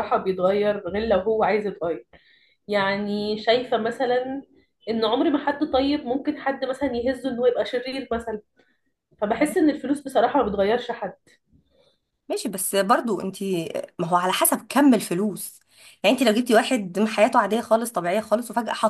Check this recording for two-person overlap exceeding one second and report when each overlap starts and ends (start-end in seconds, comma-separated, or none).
none